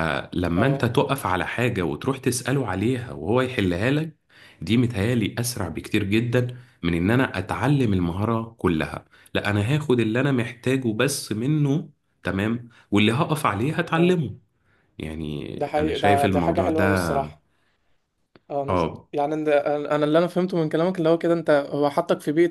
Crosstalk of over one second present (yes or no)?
yes